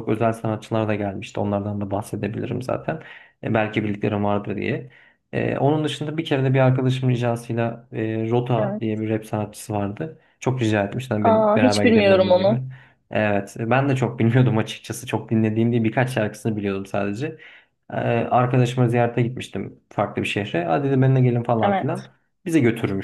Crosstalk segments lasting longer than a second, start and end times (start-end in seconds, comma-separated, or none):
11.2-12.6